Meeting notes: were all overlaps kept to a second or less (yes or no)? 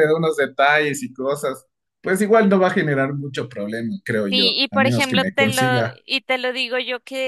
no